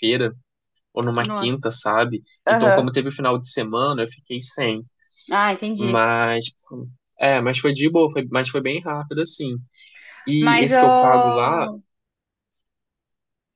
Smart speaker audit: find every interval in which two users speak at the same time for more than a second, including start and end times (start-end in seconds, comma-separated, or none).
10.4-11.7